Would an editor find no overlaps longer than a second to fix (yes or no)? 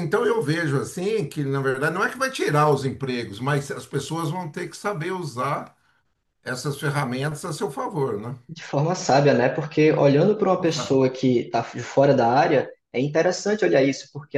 yes